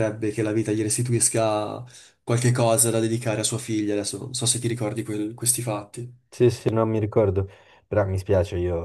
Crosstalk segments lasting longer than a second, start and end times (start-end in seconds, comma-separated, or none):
none